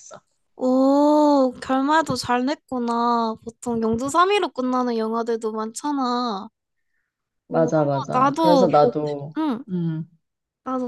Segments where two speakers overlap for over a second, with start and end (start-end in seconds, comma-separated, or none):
7.5-9.6